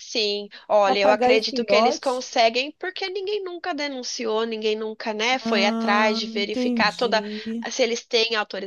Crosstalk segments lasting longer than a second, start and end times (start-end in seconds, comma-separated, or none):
0.8-2.3, 5.5-7.2